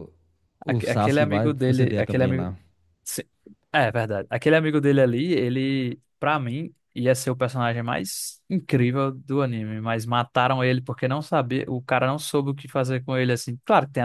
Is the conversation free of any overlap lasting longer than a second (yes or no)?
no